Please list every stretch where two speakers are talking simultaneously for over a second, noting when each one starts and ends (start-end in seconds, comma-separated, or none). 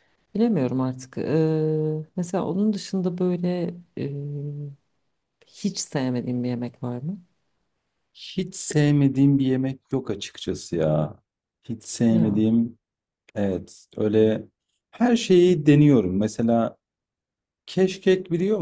none